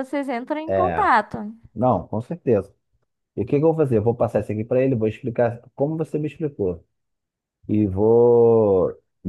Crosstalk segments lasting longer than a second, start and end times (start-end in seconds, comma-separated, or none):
none